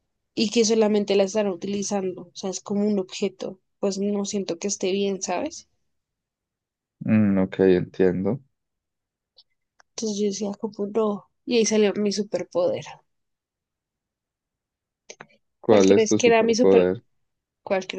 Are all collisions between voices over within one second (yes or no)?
no